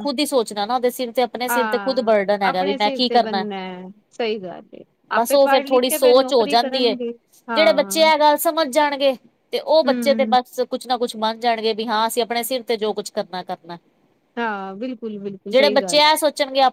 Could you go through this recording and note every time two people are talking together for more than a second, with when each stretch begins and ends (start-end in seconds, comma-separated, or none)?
1.5-3.4, 5.2-6.9